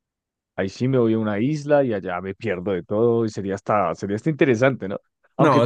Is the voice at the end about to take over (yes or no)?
yes